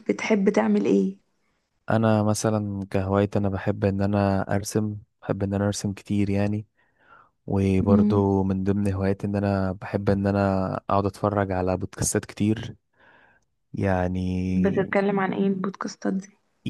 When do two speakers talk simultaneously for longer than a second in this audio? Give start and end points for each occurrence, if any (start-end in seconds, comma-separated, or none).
none